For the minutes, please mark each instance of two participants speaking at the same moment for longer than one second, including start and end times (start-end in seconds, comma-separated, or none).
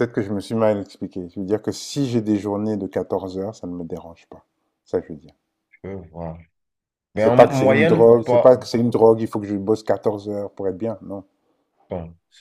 7.1-8.5